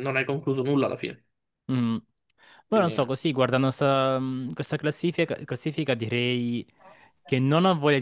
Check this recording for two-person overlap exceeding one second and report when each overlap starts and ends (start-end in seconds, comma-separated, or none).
none